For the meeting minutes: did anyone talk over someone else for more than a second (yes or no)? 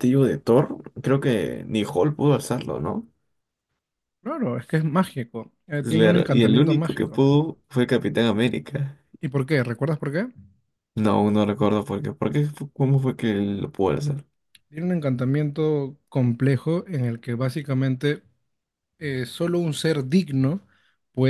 yes